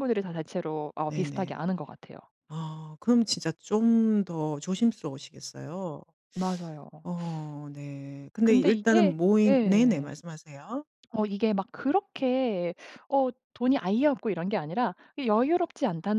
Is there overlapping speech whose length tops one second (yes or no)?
yes